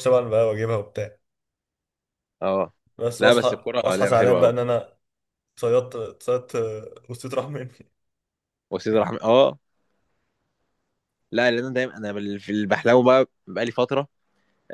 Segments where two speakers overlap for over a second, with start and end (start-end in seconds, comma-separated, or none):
3.2-4.6